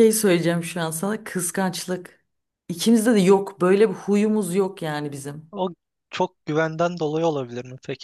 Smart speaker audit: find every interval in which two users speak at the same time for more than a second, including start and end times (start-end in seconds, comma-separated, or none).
none